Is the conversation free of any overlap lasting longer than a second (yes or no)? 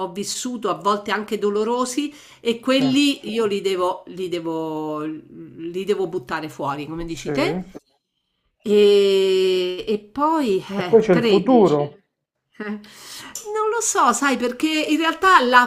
no